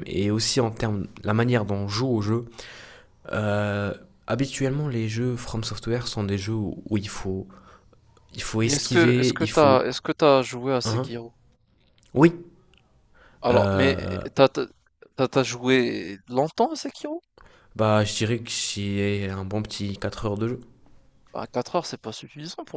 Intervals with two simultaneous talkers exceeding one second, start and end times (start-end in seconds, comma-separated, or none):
8.6-9.9